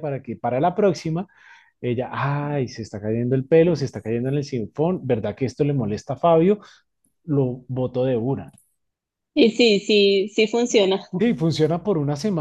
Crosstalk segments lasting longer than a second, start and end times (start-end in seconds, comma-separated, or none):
none